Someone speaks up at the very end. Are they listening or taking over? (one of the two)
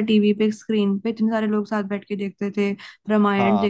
listening